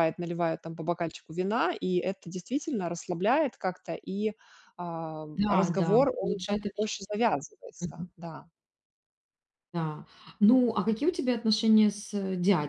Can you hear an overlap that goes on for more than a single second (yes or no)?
yes